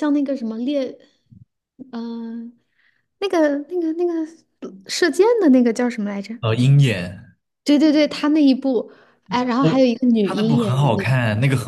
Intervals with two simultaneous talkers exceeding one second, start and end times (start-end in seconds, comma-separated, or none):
9.6-11.1